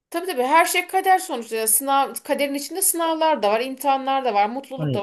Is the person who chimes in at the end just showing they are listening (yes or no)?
yes